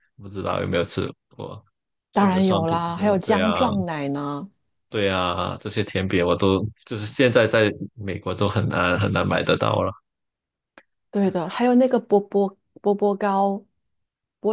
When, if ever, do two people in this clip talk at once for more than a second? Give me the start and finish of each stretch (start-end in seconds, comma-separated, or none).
2.1-3.6